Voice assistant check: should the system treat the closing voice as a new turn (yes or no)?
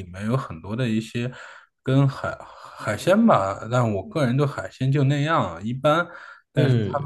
no